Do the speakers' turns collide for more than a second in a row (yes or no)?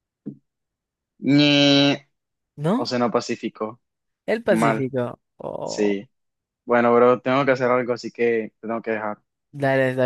no